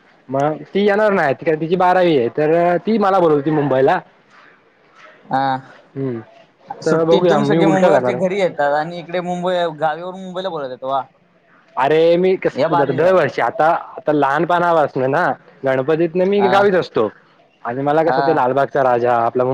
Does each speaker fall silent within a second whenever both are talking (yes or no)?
no